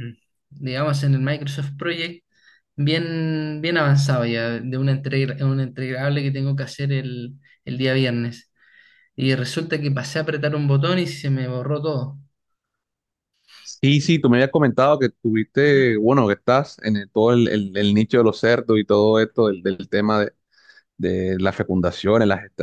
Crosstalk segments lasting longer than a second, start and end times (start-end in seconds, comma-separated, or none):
none